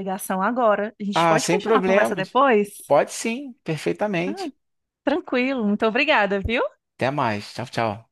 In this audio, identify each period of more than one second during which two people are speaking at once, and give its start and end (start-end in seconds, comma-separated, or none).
1.1-2.4